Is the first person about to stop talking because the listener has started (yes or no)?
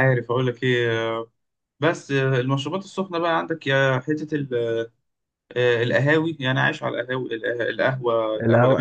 yes